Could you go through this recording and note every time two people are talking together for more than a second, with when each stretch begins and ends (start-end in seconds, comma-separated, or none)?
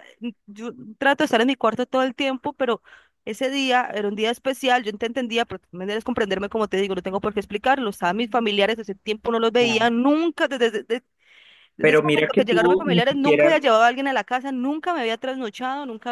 11.8-13.5